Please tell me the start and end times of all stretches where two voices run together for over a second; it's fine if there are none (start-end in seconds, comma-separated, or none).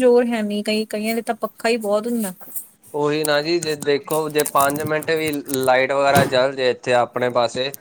none